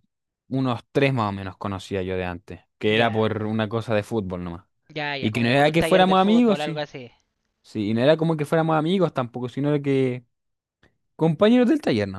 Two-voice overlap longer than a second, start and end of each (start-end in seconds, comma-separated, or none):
5.2-6.8